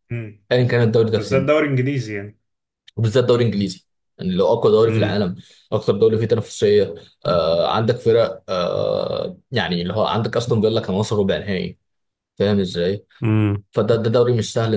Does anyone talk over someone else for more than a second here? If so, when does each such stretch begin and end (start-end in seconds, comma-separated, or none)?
none